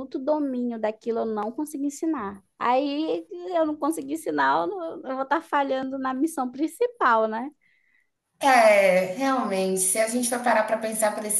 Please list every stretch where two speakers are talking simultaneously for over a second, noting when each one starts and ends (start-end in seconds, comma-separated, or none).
none